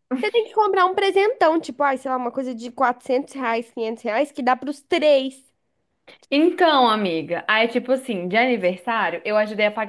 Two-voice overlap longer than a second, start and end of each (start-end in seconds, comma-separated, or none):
none